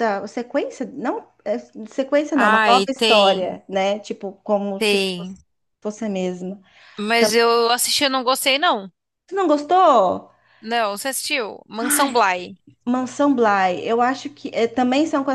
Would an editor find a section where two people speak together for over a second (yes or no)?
yes